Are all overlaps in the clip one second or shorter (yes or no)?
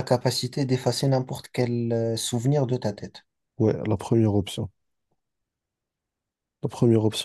yes